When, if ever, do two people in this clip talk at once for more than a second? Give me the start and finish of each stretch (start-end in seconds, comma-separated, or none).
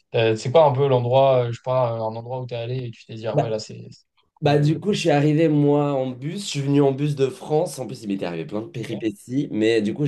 none